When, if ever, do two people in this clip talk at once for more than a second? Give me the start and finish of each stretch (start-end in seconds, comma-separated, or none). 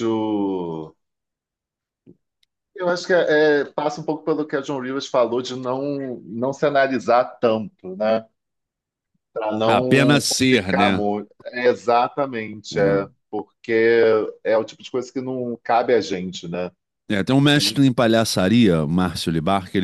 9.6-11.0